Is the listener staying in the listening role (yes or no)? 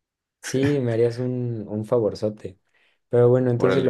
no